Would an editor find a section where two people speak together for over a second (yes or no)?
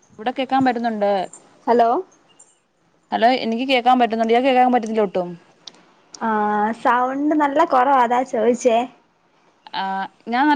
no